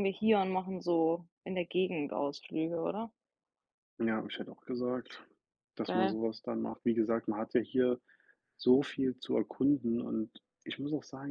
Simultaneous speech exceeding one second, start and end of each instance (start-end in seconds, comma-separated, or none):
none